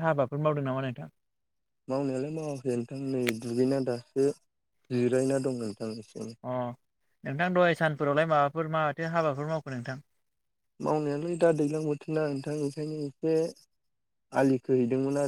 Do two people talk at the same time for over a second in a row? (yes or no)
no